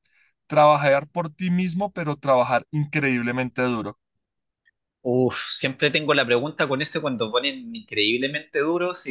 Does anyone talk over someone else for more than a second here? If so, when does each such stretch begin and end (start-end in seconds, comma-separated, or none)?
none